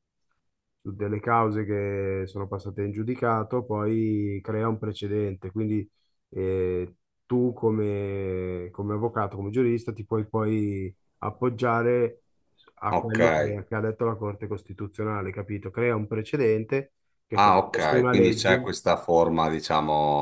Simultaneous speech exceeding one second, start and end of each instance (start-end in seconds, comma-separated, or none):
17.3-18.7